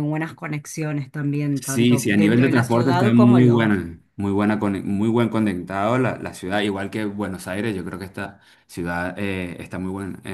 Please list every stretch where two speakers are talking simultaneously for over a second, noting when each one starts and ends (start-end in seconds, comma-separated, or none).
1.6-3.8